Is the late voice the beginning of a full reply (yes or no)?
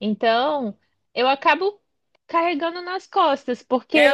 no